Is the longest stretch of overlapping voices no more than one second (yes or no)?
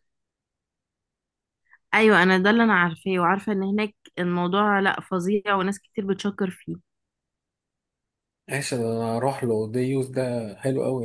yes